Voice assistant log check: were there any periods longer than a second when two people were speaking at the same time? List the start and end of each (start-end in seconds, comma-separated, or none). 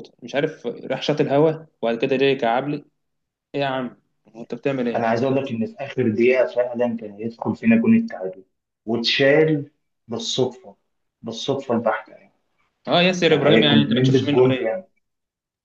13.3-14.7